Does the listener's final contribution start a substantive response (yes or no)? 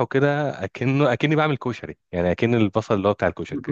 yes